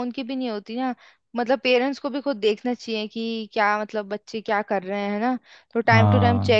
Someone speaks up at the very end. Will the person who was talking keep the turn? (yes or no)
yes